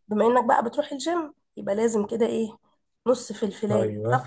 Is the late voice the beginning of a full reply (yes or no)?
no